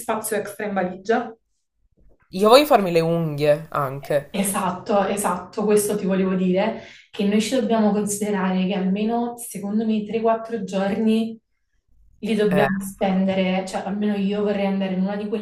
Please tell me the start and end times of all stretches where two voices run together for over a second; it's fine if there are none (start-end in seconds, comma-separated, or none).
none